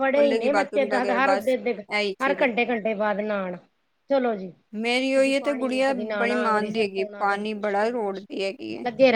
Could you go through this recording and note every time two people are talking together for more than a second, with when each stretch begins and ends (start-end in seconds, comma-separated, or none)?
5.2-8.2